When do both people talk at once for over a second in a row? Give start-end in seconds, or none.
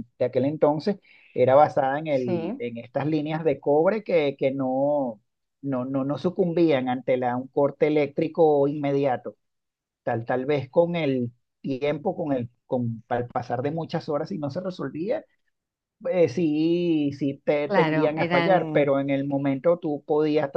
17.6-18.9